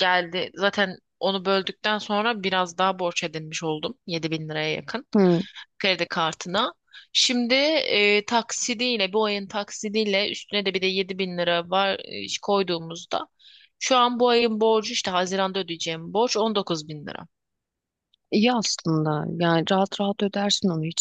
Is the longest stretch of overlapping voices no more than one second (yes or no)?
yes